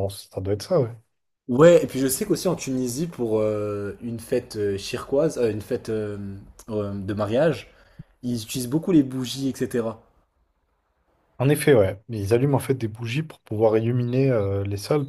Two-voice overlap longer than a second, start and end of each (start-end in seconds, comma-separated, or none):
none